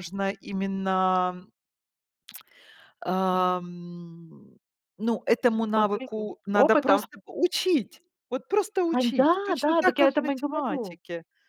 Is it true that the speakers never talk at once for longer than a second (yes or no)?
no